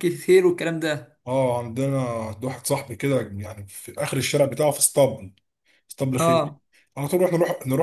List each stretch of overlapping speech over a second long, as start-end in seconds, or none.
none